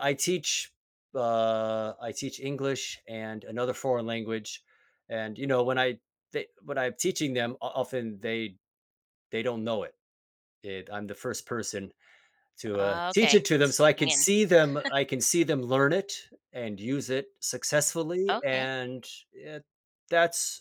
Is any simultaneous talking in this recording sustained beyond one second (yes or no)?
yes